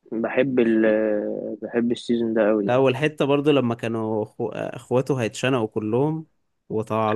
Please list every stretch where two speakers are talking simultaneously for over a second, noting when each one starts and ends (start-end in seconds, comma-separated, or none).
none